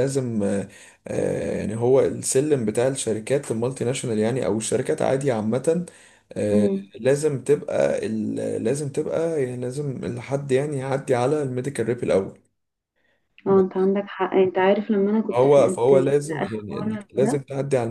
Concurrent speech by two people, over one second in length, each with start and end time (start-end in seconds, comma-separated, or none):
15.3-17.4